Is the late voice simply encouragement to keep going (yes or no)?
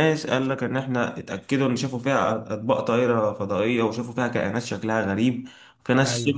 yes